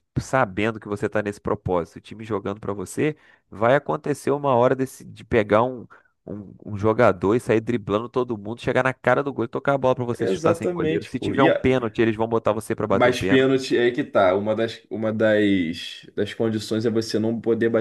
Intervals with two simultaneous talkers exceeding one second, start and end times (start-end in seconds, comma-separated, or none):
10.2-11.7